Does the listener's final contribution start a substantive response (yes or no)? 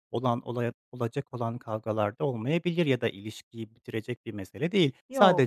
no